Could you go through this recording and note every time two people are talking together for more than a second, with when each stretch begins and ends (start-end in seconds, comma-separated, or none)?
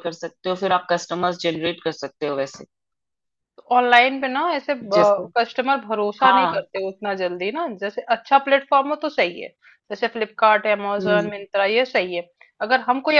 none